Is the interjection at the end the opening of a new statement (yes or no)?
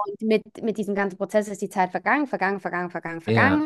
no